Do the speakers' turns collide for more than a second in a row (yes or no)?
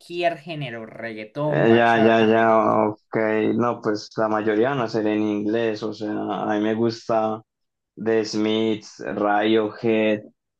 yes